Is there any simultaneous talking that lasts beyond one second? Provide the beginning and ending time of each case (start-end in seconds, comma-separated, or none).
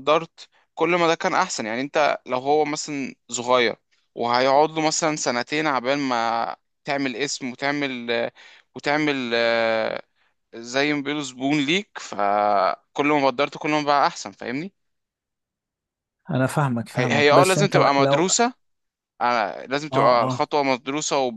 16.9-18.3